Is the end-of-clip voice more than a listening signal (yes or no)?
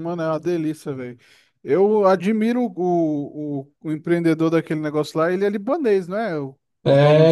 yes